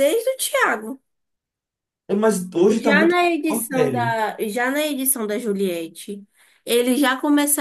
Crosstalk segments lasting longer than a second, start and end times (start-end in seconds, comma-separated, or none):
2.7-4.2